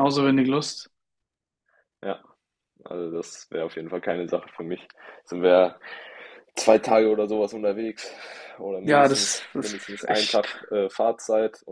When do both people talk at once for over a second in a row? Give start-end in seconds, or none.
8.8-10.5